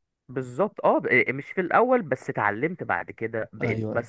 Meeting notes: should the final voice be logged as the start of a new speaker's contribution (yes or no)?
no